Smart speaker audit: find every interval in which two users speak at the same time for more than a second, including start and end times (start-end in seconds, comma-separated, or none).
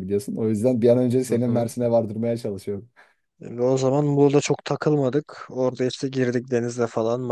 none